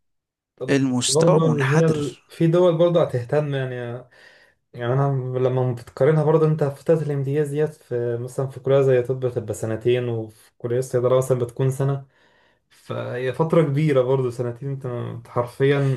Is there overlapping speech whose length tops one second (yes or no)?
yes